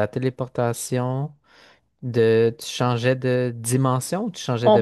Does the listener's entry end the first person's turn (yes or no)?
yes